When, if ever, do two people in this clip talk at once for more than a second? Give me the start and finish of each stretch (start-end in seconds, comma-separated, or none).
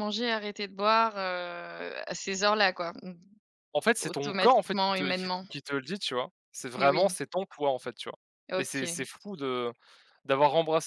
4.0-5.5